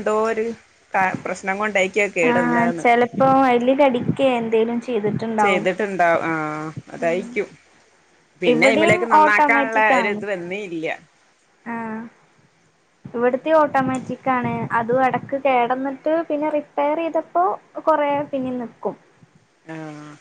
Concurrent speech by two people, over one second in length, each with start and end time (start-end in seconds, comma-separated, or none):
8.5-10.1